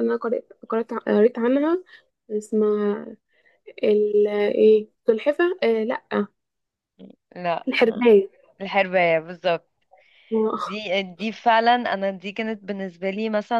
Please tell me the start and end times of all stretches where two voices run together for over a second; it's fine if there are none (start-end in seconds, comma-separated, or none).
none